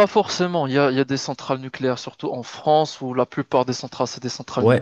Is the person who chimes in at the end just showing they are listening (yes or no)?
no